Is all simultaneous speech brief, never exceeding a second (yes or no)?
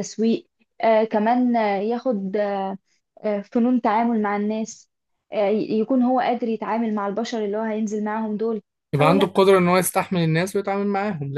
yes